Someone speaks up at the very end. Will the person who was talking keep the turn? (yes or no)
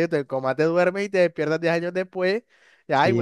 no